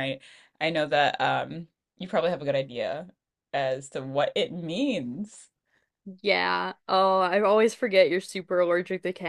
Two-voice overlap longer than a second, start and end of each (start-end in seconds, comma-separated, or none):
none